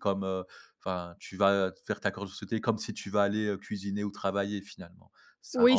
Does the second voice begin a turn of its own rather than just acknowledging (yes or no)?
yes